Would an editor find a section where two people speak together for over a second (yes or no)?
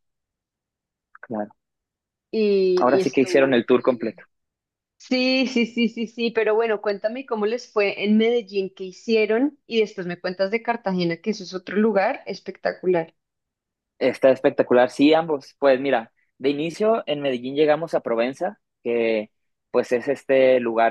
yes